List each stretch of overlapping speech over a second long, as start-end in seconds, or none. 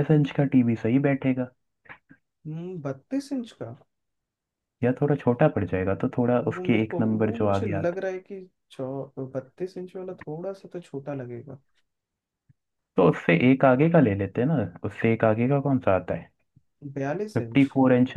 6.5-8.0